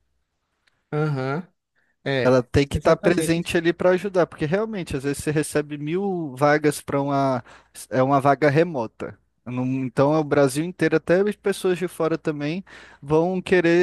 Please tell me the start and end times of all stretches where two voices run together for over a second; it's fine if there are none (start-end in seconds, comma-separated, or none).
2.2-3.5